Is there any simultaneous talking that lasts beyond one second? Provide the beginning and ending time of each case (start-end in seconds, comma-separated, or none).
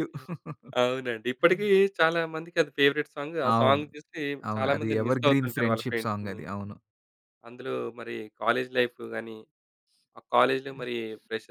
4.5-6.4